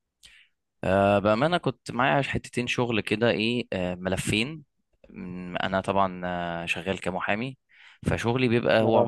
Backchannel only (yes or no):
yes